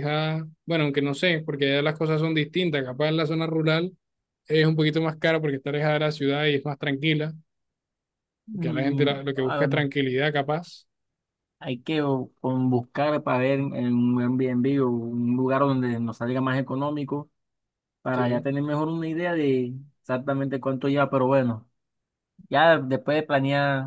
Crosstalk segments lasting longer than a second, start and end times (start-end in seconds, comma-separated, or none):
8.5-9.9